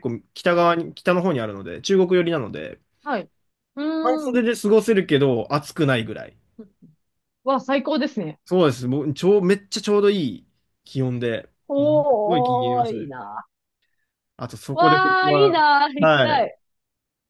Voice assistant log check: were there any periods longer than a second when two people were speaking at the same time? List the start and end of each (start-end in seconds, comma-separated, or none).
11.7-13.1, 14.7-16.5